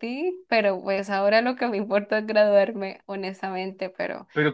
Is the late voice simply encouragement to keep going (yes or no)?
no